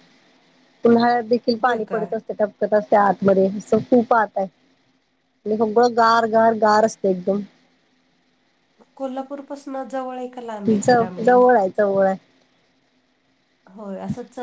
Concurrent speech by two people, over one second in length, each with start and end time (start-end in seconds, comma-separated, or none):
none